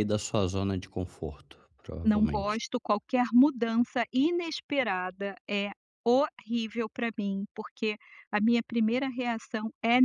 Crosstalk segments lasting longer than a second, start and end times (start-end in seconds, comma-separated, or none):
none